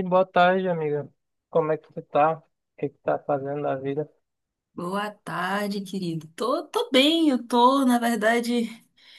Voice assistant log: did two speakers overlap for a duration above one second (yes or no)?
no